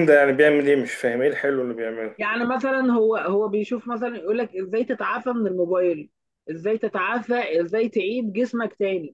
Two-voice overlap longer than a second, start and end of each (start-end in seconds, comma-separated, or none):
none